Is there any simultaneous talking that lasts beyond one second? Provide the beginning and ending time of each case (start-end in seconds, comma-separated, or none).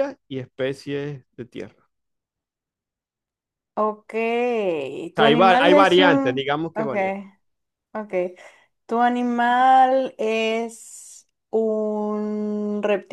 5.2-6.9